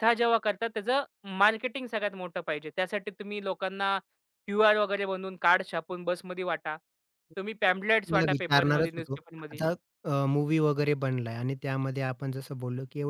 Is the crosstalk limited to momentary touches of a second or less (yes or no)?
no